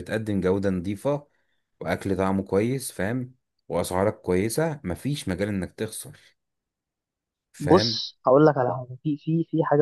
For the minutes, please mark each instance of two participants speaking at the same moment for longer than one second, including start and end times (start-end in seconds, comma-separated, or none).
none